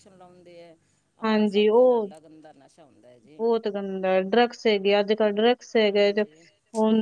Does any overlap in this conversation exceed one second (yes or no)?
no